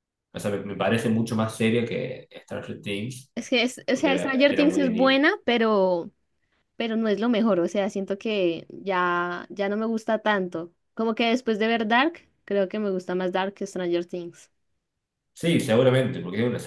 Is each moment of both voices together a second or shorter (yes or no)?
no